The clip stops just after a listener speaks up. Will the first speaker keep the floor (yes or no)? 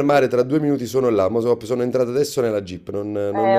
no